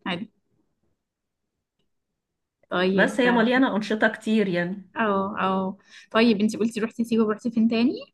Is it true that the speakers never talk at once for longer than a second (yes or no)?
yes